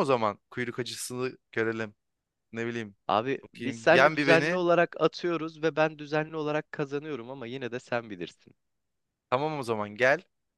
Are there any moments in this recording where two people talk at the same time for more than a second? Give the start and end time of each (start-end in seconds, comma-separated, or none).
3.4-4.6